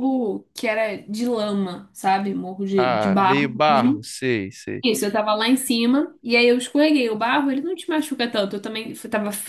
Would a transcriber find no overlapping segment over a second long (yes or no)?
no